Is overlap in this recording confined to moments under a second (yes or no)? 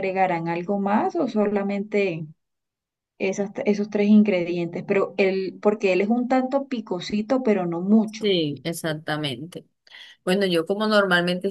yes